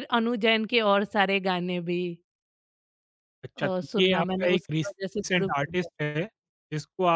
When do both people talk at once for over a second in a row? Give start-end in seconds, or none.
3.6-5.9